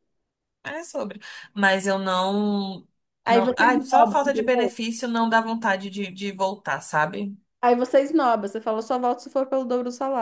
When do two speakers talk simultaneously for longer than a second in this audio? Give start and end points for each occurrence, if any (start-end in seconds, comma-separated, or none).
3.3-4.7